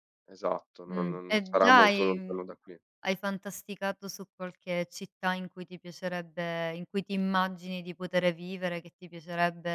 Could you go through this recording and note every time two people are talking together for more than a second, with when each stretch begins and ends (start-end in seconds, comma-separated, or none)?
0.9-2.5